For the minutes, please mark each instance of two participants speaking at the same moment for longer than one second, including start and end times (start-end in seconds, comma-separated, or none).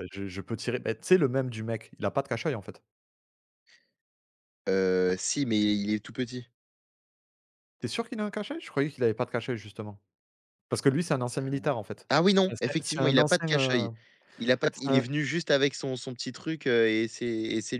12.5-13.9